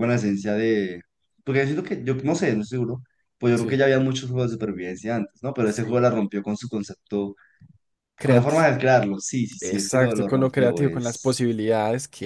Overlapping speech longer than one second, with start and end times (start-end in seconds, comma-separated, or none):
9.6-11.5